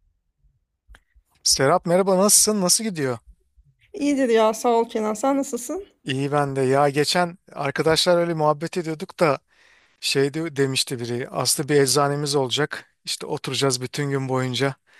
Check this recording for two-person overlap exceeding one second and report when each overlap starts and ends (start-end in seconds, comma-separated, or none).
none